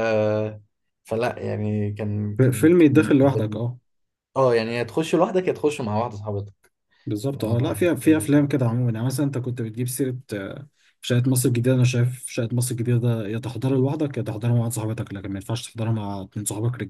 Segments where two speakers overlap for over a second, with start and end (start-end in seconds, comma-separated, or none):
2.4-3.6